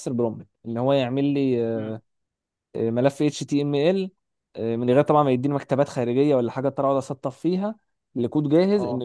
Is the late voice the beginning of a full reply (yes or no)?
no